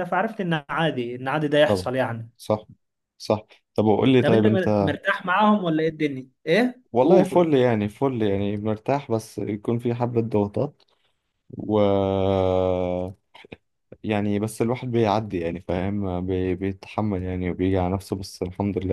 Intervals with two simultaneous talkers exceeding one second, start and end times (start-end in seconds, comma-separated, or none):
none